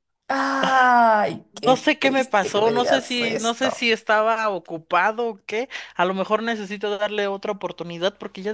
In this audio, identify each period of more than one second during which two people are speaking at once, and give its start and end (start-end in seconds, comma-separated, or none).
1.6-3.9